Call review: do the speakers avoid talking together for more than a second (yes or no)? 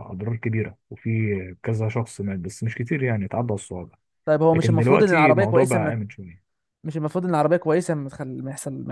no